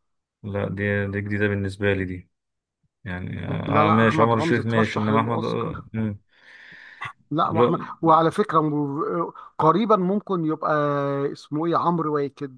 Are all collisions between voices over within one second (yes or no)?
no